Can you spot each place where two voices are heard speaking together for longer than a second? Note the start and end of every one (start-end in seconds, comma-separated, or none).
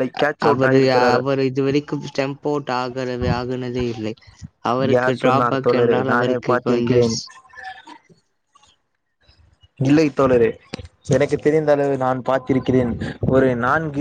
4.9-7.1